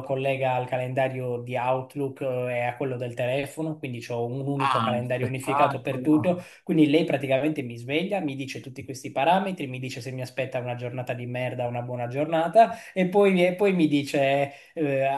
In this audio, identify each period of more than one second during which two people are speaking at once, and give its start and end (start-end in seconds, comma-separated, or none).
4.5-6.5